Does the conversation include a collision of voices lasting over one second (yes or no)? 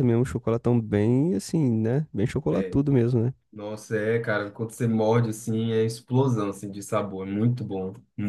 no